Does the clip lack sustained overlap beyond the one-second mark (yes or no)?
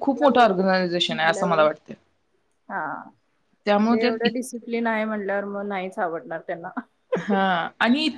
yes